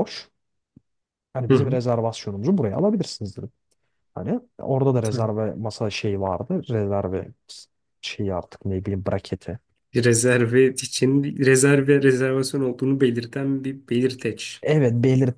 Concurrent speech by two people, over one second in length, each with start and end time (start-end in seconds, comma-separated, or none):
none